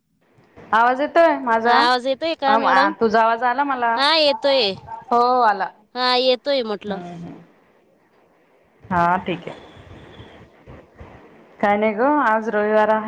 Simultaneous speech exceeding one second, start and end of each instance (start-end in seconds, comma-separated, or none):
1.6-2.9